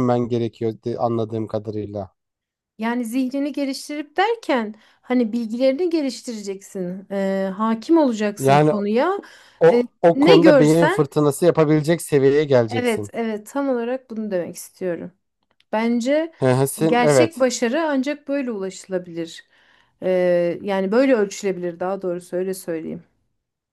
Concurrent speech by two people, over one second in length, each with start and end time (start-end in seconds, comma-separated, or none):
9.7-11.1